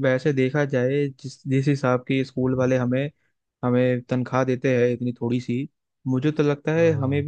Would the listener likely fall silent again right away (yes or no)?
yes